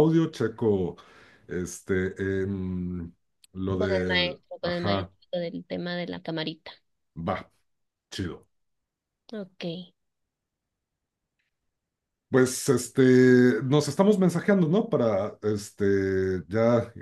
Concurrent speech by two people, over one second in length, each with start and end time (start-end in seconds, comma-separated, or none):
3.8-5.1